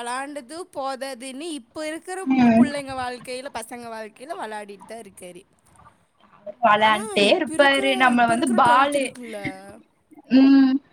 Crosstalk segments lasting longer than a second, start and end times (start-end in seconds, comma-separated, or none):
6.8-9.1